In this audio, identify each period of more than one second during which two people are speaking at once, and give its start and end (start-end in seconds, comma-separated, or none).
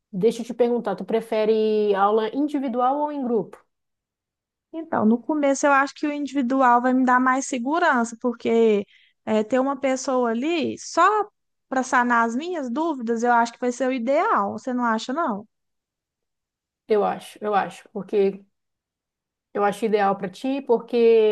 none